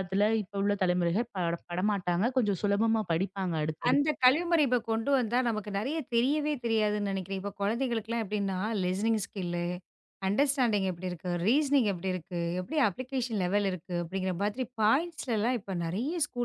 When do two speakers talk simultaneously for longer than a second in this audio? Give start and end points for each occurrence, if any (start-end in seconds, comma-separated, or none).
none